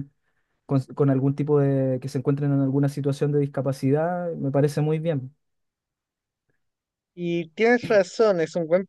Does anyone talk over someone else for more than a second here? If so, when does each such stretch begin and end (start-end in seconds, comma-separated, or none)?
none